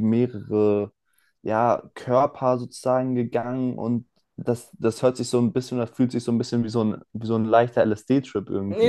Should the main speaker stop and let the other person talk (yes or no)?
yes